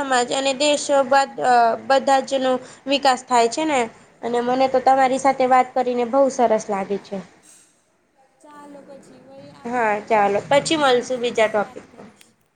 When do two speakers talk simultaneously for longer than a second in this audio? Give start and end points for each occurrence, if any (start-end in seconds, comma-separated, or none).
9.7-12.0